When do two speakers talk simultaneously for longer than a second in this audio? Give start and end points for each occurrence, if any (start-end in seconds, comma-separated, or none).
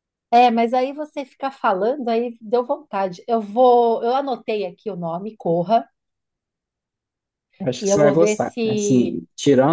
7.8-9.2